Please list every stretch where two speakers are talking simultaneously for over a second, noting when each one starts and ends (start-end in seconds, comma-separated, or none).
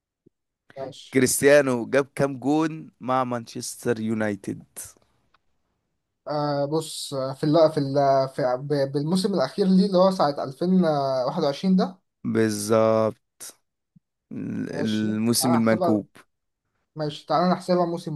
14.7-16.0